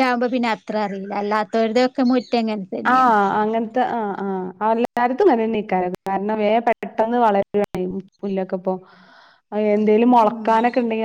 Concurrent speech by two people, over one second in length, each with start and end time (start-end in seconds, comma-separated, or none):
none